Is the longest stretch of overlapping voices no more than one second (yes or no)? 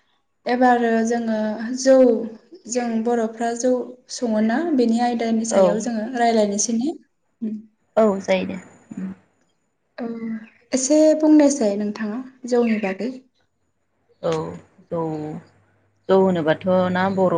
yes